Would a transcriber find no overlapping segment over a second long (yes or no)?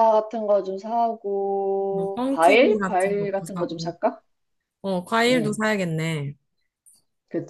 no